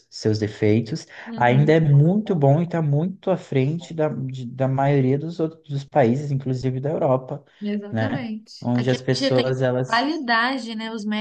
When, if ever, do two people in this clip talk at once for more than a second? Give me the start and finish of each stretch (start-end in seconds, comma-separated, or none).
7.9-10.1